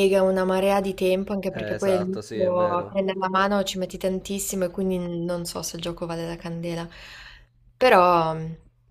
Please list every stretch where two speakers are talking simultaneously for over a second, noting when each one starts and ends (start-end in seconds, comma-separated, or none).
1.5-3.0